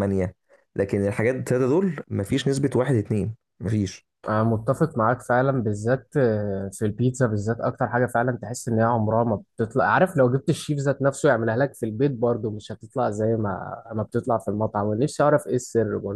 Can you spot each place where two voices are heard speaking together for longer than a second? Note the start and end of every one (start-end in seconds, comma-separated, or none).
none